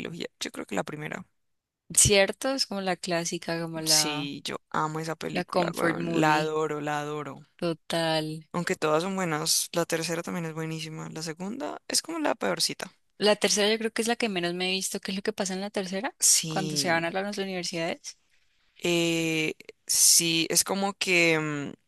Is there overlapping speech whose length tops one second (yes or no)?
yes